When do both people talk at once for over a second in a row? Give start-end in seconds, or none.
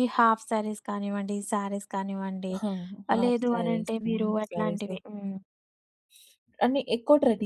3.1-4.9